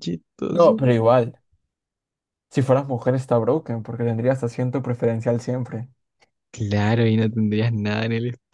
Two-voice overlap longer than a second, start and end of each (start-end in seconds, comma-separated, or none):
none